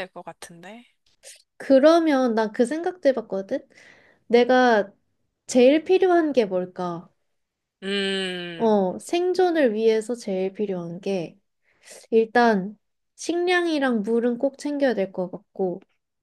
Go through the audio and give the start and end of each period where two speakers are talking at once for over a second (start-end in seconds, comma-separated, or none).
none